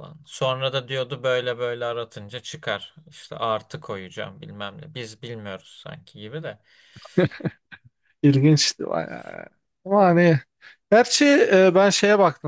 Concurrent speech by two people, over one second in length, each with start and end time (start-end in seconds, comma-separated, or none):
none